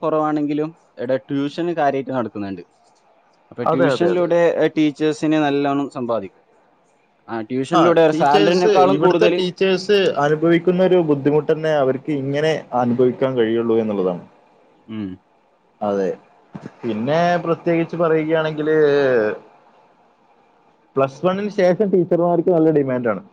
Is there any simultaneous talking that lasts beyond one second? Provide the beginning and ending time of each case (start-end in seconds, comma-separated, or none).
none